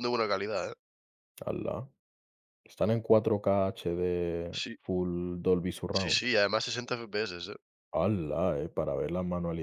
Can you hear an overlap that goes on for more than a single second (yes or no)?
no